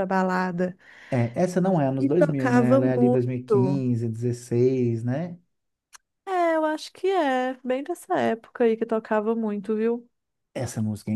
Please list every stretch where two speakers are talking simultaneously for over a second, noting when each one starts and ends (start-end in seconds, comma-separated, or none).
2.0-3.8